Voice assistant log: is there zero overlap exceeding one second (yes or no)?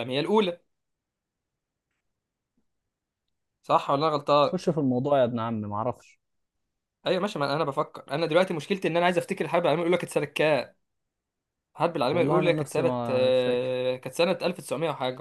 no